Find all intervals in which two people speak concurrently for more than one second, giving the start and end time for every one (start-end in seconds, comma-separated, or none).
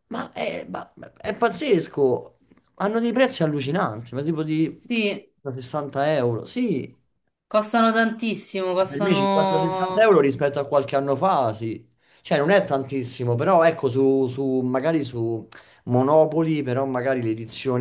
8.8-10.2